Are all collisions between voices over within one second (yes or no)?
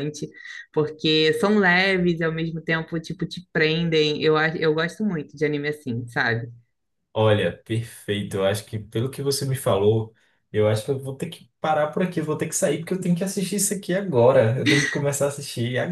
yes